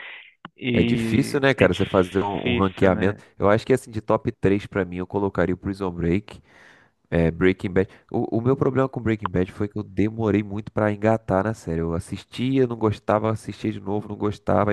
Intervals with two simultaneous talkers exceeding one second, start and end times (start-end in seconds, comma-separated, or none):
0.7-3.2